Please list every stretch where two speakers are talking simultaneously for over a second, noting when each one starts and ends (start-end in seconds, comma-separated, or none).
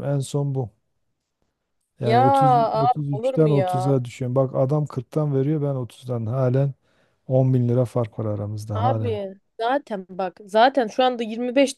2.8-4.0